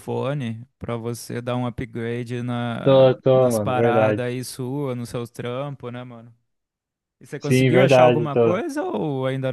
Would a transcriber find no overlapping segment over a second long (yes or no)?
no